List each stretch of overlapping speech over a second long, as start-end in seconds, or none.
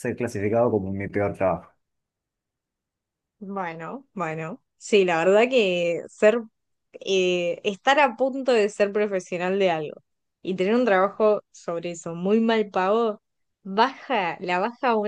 none